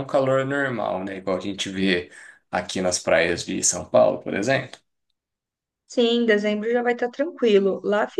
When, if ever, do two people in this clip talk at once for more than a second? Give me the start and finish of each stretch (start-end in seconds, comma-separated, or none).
none